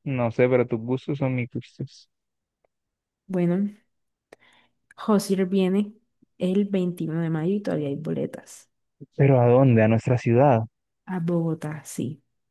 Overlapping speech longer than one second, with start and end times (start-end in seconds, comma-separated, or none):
none